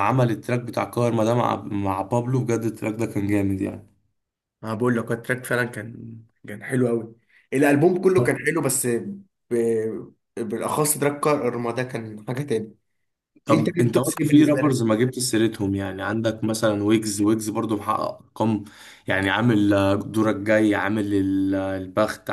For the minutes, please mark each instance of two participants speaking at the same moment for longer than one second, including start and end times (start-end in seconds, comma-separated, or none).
13.5-14.8